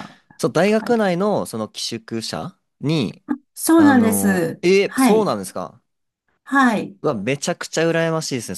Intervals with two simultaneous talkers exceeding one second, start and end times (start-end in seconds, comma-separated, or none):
3.8-5.3